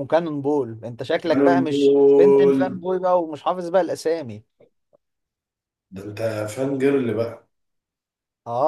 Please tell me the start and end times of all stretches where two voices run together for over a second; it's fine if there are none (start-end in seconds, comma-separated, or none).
1.2-2.8